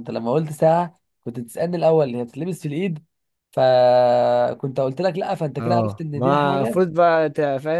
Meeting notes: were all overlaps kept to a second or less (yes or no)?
no